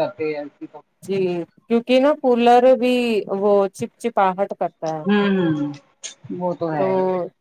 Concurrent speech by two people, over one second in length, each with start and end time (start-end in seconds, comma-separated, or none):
none